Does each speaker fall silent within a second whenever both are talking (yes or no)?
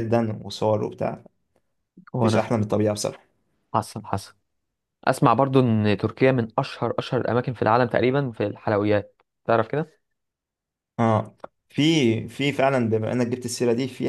yes